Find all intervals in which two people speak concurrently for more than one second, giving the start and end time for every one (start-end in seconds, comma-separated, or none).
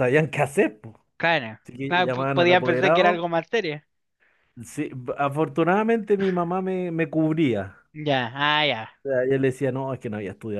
1.6-3.2